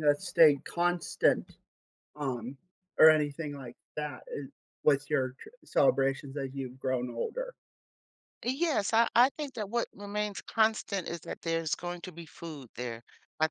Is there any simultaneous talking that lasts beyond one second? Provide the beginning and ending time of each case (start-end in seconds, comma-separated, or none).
none